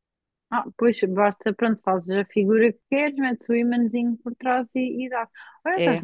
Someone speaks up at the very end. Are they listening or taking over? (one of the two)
listening